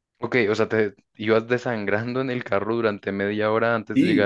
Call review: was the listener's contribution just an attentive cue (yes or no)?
no